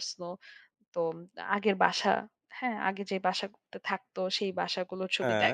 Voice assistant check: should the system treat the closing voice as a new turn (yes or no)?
no